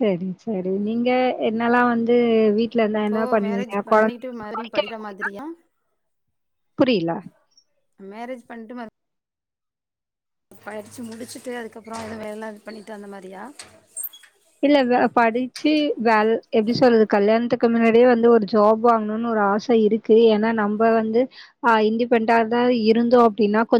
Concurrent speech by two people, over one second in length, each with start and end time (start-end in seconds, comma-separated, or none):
3.0-5.3